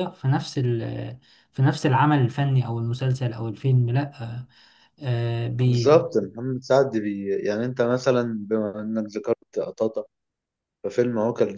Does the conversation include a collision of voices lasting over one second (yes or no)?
no